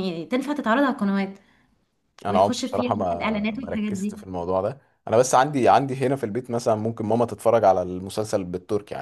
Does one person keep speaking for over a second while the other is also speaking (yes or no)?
yes